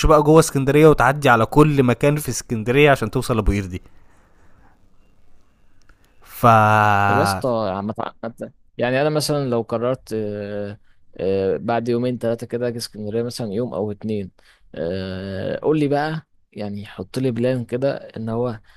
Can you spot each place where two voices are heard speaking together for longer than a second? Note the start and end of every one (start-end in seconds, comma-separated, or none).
none